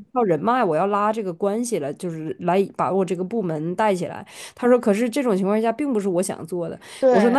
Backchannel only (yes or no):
yes